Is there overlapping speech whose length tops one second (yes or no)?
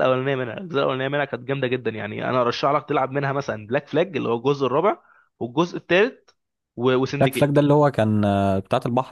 no